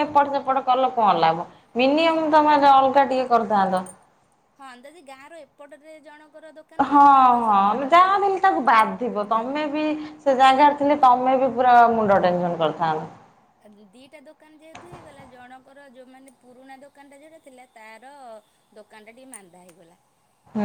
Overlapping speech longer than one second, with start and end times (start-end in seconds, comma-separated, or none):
none